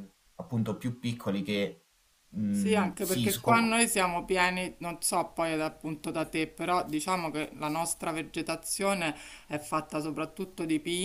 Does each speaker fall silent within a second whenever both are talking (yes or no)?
no